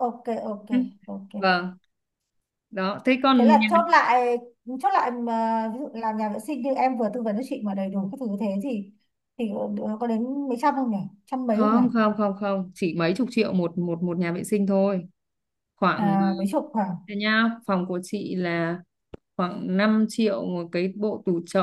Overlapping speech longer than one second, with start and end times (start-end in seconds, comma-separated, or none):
none